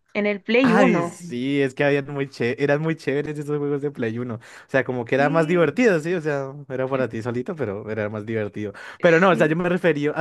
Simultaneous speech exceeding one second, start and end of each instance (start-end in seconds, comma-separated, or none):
none